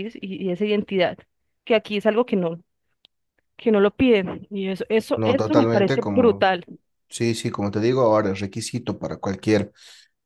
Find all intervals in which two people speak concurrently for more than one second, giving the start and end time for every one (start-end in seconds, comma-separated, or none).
5.2-6.5